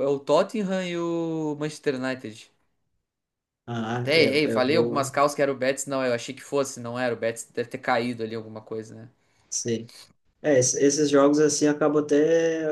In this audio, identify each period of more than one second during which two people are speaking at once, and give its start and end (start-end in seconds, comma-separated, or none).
3.9-5.2